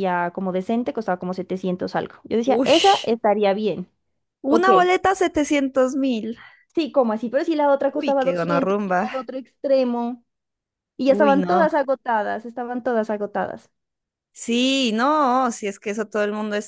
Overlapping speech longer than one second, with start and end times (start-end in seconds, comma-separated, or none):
7.9-9.1